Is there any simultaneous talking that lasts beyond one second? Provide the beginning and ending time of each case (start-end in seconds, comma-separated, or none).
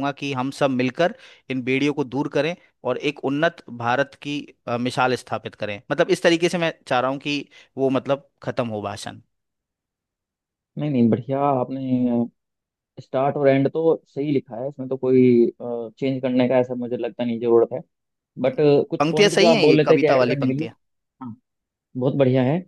19.0-20.7